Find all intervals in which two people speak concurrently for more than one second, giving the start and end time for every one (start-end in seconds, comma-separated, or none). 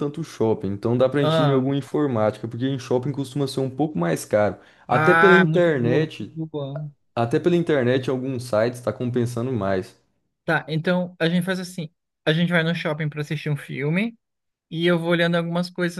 4.9-6.4